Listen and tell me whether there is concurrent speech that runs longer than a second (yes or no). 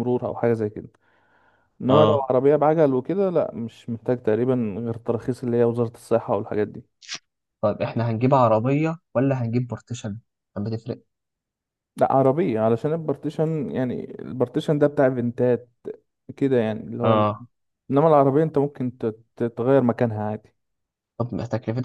no